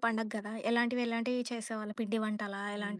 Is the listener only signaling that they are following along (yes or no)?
no